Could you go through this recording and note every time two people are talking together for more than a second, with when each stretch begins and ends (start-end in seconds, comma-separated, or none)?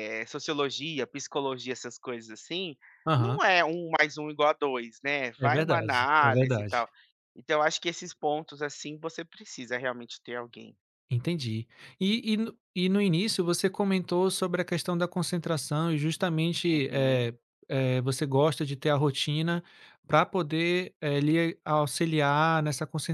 5.4-6.9